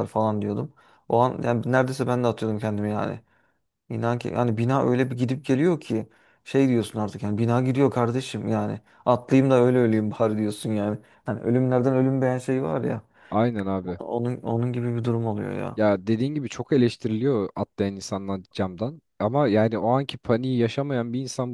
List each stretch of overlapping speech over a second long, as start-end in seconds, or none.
none